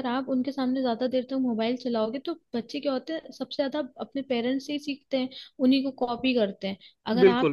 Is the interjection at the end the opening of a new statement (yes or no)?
no